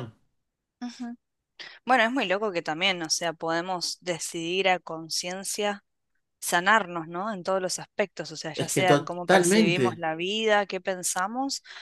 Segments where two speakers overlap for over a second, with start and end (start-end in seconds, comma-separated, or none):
8.5-10.1